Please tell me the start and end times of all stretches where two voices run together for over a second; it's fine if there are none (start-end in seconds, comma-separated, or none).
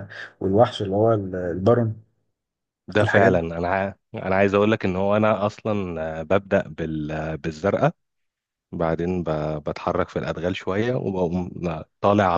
none